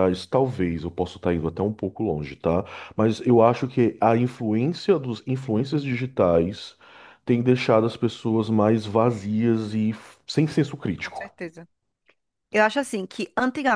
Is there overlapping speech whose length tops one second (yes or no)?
no